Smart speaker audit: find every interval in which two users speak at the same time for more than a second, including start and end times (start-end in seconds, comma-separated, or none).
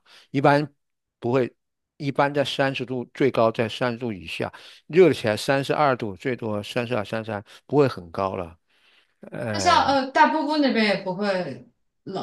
none